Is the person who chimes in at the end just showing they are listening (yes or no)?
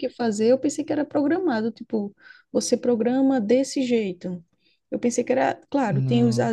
yes